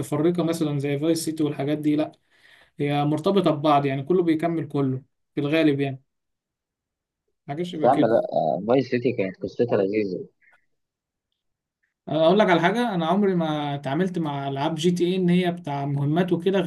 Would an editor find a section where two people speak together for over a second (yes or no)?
no